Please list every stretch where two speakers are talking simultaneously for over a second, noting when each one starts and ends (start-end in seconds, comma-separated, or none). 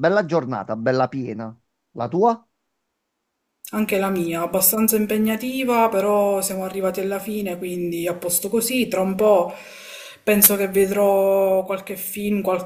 none